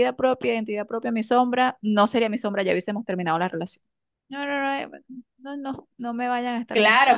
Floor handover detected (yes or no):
yes